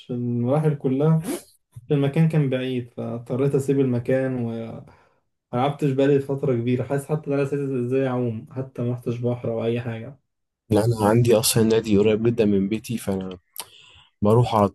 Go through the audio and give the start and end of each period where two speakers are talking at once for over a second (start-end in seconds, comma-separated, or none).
none